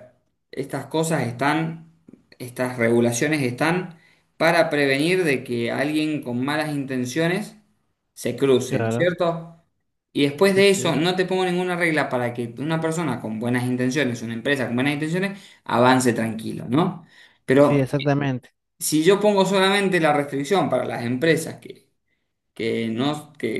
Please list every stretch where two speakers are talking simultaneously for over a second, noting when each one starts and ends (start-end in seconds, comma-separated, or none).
none